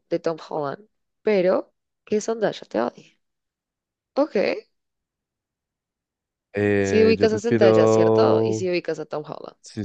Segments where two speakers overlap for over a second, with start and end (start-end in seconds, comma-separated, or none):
6.8-8.7